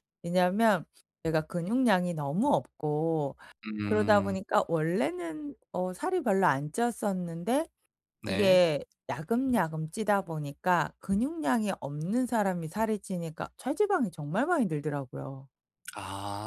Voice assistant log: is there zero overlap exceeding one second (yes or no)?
yes